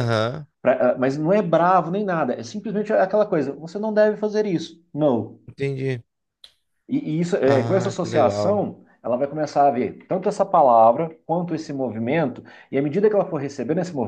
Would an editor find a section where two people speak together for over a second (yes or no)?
yes